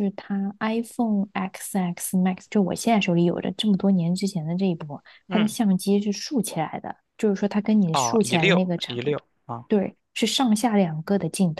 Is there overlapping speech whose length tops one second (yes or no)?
yes